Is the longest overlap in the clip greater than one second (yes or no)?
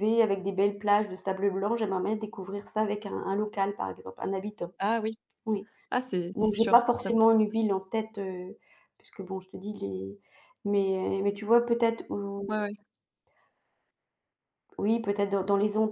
yes